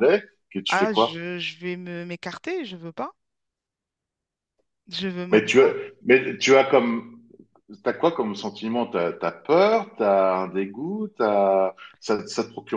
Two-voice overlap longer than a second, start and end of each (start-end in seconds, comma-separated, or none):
none